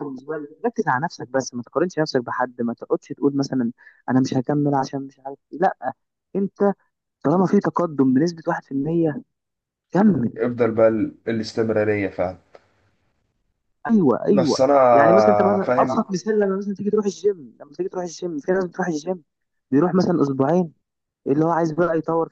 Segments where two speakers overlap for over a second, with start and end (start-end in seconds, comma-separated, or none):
none